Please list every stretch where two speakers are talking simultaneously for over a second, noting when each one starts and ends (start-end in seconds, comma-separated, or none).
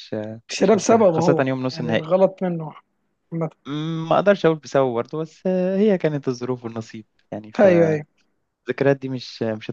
0.6-2.1